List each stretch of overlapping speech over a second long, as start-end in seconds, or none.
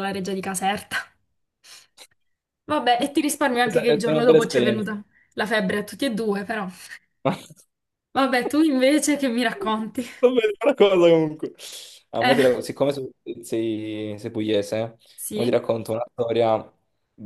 3.6-4.9